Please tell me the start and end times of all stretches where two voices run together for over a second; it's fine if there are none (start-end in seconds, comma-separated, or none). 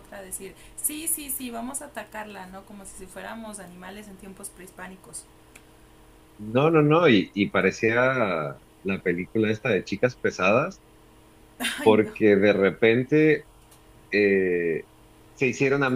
none